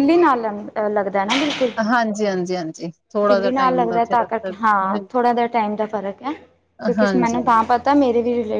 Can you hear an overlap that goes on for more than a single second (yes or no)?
yes